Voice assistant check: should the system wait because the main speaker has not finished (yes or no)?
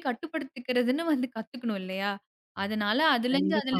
yes